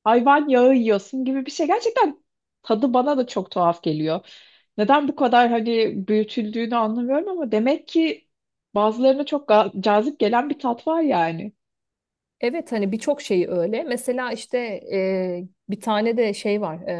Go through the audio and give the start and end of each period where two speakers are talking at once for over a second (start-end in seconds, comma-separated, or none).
none